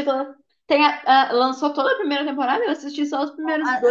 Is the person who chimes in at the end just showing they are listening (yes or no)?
no